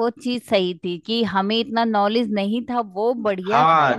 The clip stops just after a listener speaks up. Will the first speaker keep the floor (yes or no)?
no